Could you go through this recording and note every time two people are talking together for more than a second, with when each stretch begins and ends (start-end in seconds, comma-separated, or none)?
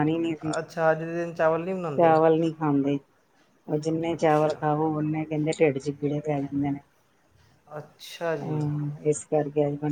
none